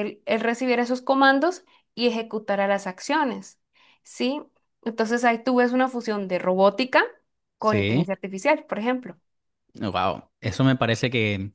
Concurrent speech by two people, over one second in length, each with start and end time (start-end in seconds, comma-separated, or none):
none